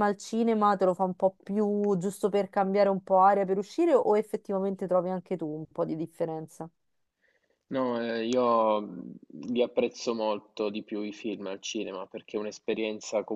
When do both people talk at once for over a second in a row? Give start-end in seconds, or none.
none